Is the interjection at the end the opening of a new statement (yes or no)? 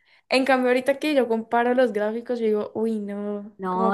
yes